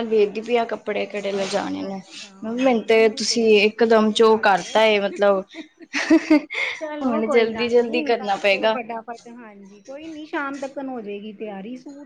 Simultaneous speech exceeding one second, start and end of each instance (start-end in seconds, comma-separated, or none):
2.6-4.8, 7.0-8.8